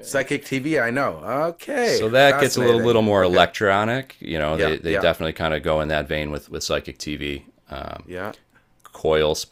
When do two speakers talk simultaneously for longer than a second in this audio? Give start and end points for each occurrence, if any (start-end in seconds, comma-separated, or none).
1.8-3.4